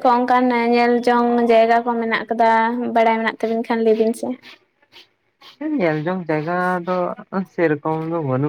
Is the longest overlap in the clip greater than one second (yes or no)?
no